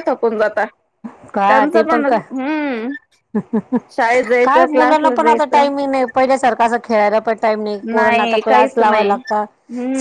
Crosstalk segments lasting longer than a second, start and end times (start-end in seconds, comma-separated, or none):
4.0-5.7, 7.9-9.4